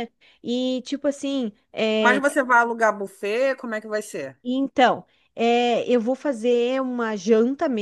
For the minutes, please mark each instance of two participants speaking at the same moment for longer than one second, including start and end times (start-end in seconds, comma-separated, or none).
none